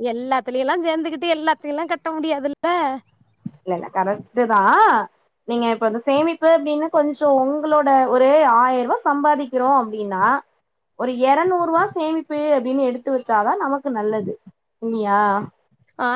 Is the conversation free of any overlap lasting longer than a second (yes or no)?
yes